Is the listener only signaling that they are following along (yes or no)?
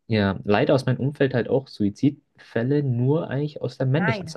yes